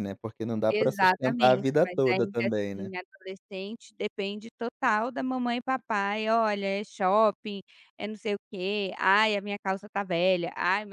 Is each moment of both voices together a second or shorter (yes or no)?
no